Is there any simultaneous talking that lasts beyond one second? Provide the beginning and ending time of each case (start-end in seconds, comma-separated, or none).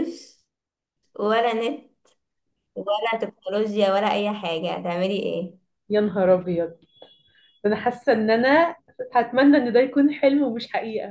none